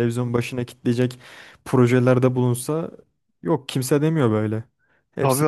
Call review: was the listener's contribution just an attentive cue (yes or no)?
no